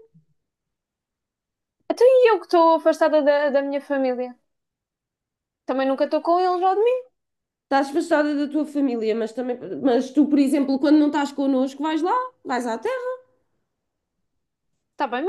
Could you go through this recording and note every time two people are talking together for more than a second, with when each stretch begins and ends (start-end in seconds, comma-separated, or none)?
none